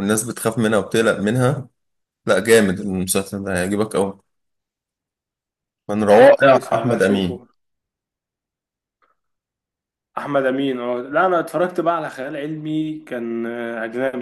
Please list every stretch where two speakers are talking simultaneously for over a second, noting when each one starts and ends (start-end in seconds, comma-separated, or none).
6.2-7.4